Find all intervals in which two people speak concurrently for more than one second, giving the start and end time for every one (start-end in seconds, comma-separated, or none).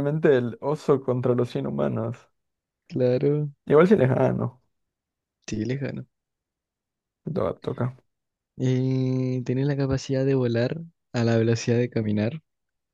none